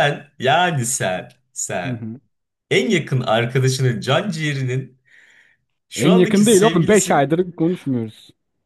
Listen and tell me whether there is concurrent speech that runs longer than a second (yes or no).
yes